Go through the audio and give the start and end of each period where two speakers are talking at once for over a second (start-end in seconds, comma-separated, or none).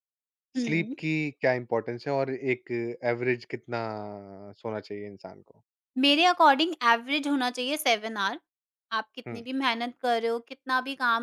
none